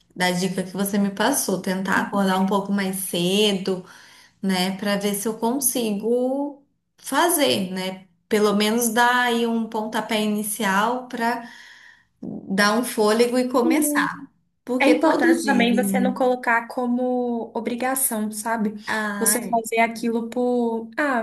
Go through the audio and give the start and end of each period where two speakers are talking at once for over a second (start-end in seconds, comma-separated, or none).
14.8-16.1